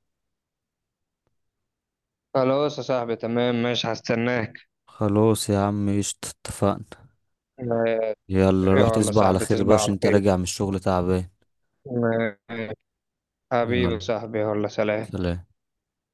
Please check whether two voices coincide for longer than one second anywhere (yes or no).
yes